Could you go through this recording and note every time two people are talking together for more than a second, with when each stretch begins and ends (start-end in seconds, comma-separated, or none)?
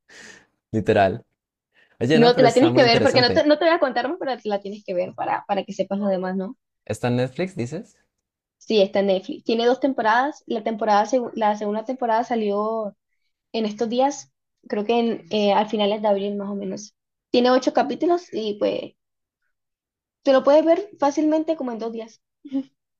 2.1-3.5